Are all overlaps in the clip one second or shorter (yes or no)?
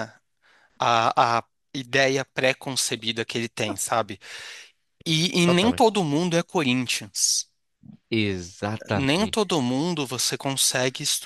yes